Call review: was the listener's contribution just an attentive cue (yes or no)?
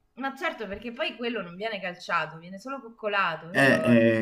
no